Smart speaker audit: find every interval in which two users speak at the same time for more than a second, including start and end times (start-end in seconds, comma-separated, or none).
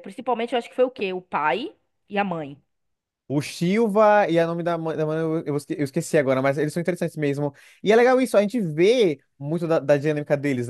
none